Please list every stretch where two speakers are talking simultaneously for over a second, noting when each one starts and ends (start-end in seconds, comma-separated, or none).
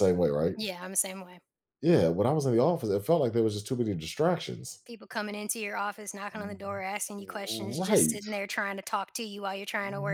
6.3-8.2